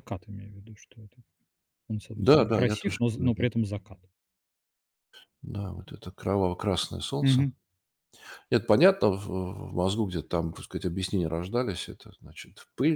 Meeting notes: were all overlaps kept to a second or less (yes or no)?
no